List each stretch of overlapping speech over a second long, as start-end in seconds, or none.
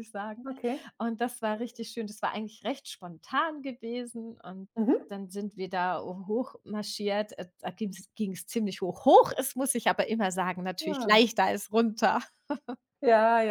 none